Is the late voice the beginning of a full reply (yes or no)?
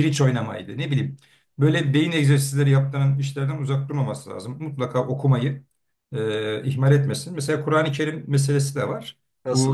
no